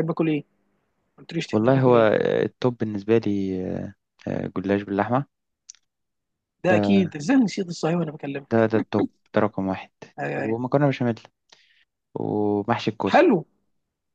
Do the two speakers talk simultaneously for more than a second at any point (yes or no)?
no